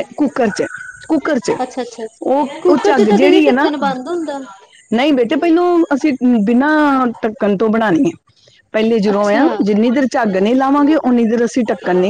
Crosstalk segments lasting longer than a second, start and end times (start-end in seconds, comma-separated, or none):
2.6-4.4